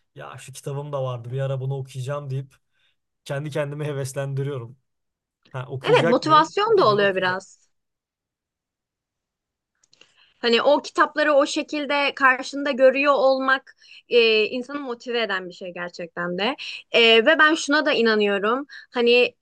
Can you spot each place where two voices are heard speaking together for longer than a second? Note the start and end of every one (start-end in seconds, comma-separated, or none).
5.8-7.4